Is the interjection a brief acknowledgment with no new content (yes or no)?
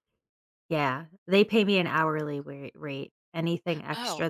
yes